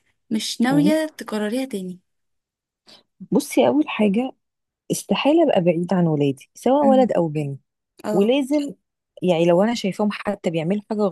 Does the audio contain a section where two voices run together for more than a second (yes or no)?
no